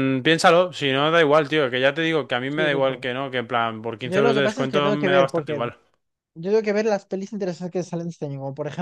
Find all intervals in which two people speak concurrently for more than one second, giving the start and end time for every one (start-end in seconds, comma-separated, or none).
4.0-5.6